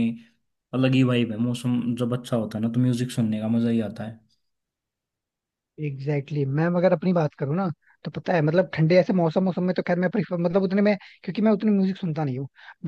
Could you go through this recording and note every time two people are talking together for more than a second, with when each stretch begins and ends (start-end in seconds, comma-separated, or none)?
none